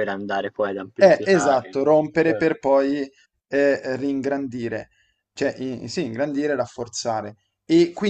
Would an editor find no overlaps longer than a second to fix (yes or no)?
no